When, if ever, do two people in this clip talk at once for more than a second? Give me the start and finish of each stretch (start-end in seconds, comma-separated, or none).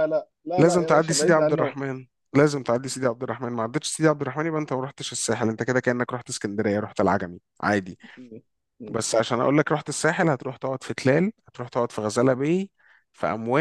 0.6-1.8